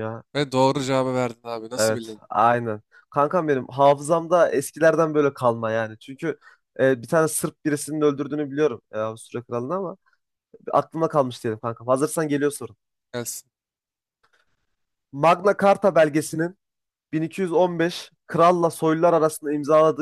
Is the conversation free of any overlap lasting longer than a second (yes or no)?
yes